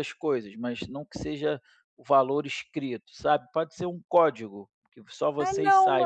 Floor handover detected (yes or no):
yes